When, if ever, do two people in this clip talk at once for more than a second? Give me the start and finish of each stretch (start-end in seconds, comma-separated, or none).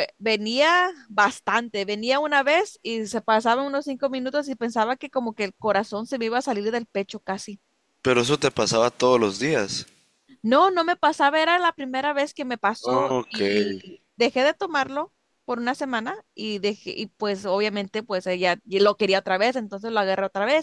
none